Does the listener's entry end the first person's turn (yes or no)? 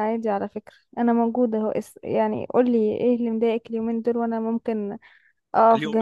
yes